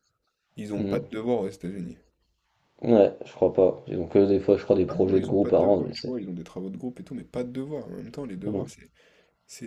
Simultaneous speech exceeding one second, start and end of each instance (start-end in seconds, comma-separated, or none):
4.9-6.1